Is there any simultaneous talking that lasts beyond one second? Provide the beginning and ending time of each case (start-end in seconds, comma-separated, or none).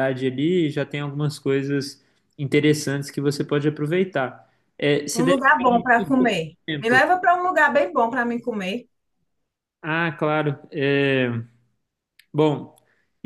5.1-7.0